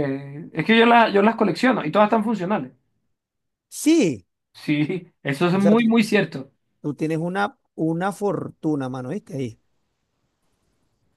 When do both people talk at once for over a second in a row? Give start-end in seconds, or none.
none